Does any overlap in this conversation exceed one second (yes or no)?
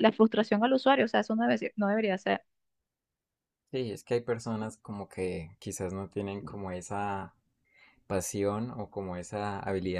no